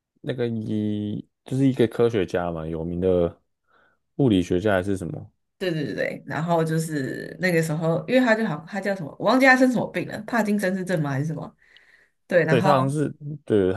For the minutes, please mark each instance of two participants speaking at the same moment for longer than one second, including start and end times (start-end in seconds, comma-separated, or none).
none